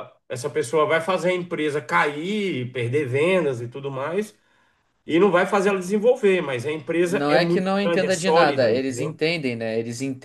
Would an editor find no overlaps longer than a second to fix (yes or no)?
no